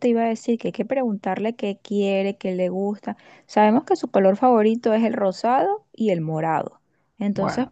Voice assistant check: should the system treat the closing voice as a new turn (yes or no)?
no